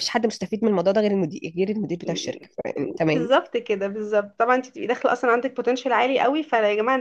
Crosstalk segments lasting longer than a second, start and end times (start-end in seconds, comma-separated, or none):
none